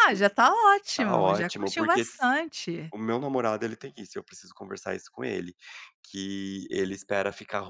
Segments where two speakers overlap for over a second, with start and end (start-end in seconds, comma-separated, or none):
1.0-2.2